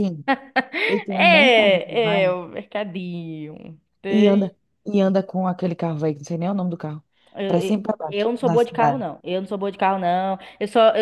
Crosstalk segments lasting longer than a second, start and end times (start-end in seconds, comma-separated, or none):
1.1-2.3, 7.5-9.1